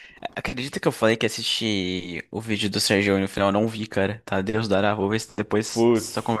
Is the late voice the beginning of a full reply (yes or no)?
yes